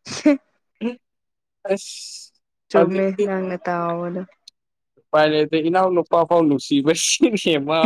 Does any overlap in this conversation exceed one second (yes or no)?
no